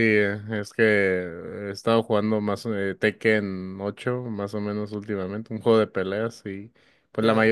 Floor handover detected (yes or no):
no